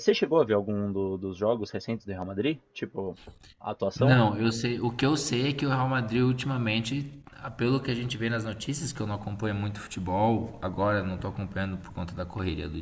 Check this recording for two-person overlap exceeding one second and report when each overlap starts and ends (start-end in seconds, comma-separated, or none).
none